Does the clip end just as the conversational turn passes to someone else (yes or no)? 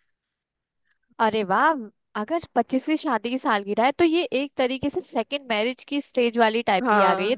no